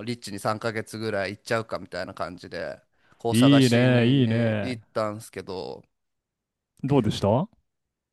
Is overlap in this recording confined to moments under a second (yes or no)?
no